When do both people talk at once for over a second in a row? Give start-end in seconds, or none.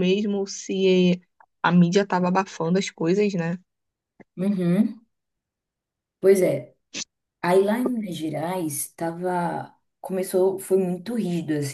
none